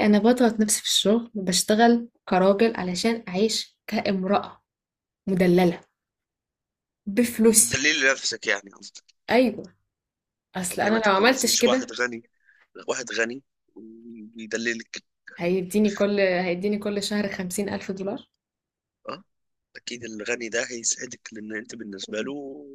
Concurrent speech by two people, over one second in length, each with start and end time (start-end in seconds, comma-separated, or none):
10.7-11.9